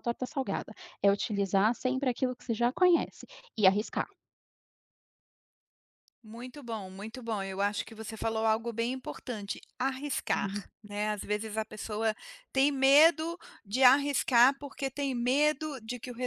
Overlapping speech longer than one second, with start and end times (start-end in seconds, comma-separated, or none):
none